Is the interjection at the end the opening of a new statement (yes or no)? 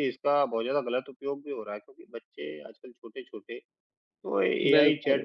no